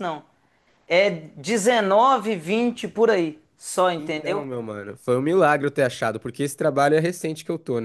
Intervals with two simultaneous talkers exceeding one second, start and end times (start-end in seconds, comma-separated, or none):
none